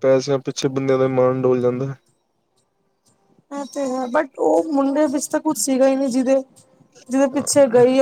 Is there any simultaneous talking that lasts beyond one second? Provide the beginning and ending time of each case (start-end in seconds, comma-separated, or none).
none